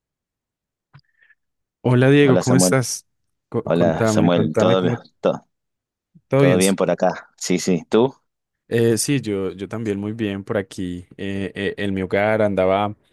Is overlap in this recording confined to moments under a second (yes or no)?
no